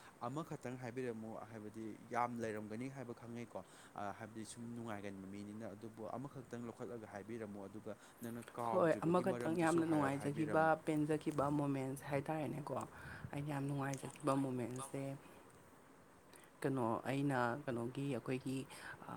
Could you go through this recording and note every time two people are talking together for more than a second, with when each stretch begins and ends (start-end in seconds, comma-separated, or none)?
8.7-10.7